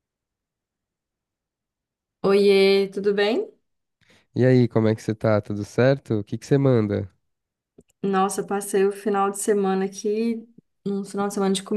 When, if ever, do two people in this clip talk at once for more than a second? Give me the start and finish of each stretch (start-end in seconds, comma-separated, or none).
none